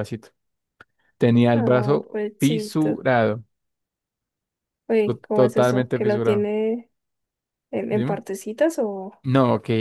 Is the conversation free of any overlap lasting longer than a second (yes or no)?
no